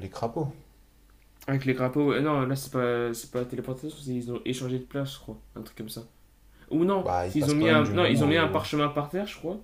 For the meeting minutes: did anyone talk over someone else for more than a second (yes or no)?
yes